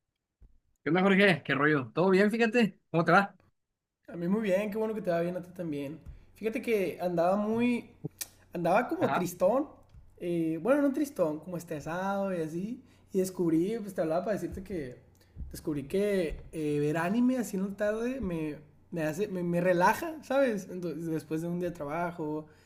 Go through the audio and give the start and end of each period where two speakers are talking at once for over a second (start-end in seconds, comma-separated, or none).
none